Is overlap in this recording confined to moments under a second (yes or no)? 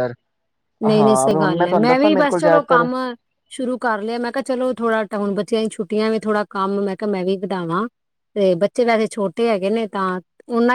no